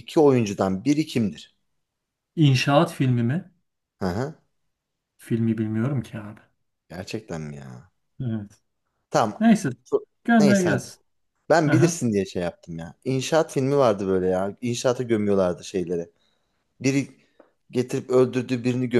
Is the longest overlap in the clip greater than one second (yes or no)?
no